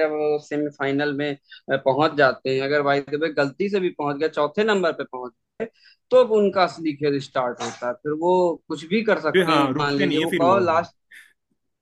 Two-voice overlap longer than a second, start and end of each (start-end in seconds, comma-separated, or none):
9.3-10.9